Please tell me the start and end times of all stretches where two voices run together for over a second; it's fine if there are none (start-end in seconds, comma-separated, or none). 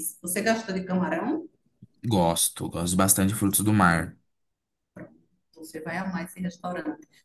none